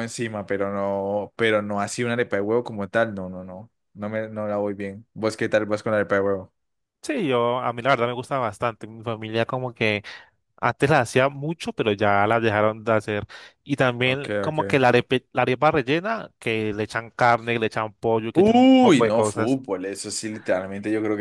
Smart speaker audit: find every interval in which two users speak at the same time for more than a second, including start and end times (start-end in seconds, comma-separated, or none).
18.3-19.6